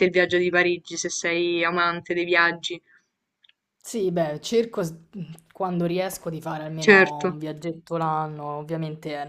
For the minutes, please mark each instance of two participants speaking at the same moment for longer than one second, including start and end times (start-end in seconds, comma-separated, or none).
none